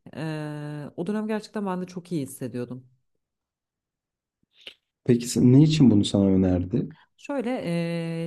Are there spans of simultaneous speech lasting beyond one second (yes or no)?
no